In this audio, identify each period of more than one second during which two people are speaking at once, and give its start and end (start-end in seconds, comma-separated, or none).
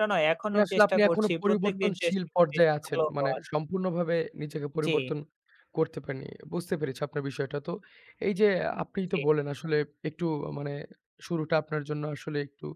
0.5-3.4